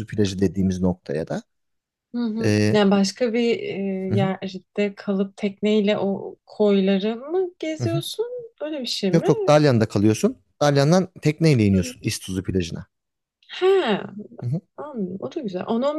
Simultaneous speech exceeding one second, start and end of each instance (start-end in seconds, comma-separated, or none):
none